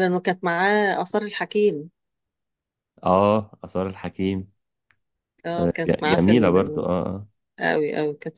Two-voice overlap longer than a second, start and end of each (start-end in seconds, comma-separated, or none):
5.6-6.8